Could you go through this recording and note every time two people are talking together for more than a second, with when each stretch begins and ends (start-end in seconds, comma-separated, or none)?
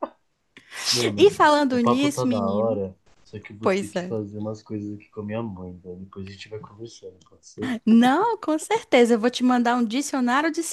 1.2-2.8